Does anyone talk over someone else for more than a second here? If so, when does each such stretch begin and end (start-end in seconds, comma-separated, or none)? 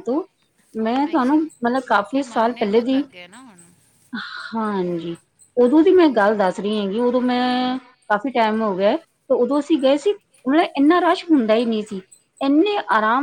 1.1-3.0